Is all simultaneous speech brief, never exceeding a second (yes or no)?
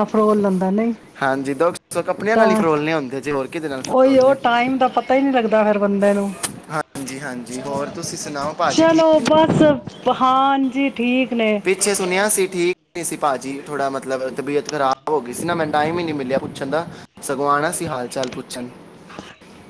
no